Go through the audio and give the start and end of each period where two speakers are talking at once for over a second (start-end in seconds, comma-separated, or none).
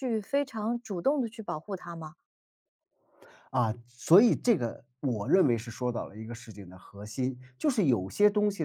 none